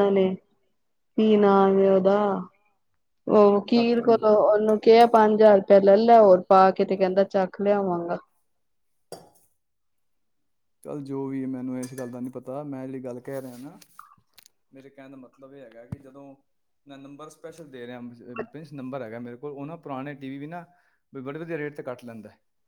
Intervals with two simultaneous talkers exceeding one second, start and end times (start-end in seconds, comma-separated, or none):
none